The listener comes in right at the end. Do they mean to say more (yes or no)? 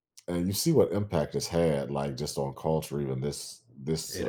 no